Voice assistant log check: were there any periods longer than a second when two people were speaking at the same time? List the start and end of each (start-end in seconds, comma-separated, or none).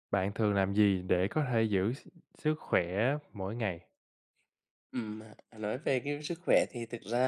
none